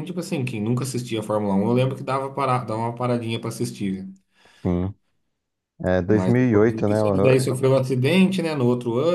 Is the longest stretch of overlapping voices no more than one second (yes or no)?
no